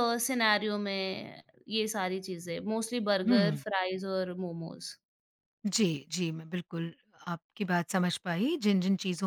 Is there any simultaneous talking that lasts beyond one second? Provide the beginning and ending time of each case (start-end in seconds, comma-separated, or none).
none